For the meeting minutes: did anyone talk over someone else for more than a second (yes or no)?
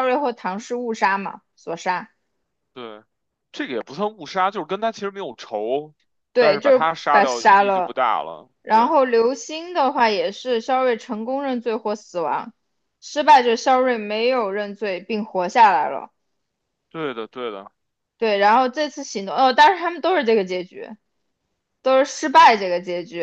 yes